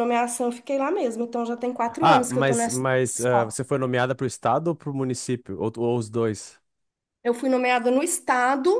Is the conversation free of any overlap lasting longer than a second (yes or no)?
no